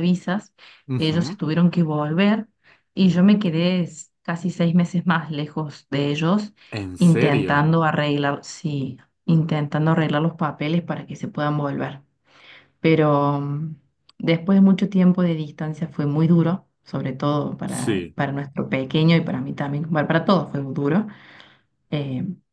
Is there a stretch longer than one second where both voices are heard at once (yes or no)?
no